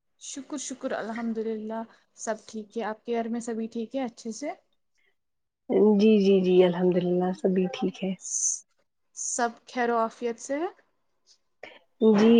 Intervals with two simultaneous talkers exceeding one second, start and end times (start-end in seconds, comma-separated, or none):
none